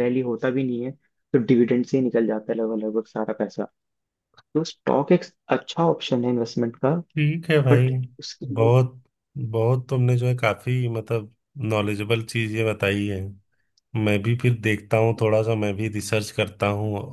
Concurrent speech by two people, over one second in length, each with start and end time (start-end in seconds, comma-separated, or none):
none